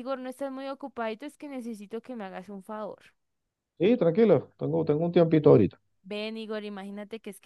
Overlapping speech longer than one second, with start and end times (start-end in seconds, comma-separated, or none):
none